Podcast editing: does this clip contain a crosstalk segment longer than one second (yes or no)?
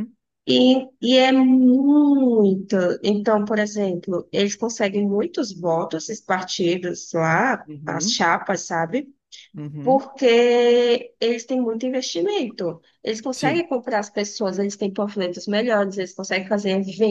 no